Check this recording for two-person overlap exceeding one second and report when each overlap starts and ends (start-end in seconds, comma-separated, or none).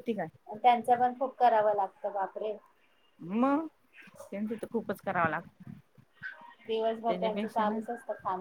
none